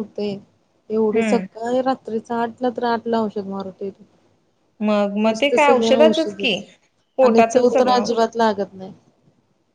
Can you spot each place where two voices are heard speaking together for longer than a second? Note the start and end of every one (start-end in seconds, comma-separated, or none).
4.8-6.6